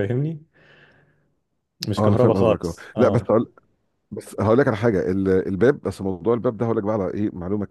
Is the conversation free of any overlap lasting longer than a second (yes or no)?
no